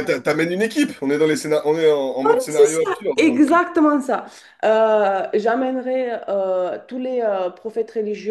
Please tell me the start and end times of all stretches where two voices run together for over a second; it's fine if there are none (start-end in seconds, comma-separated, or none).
2.2-3.6